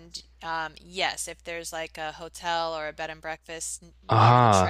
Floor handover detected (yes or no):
no